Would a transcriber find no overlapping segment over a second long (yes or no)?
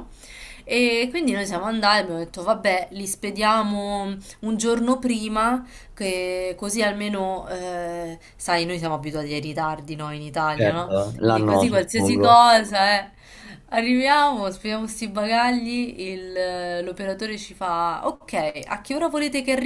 no